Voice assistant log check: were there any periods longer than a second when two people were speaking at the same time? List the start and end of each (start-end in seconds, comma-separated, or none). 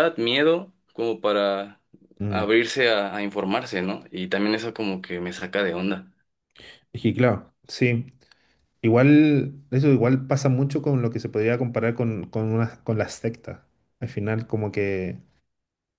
none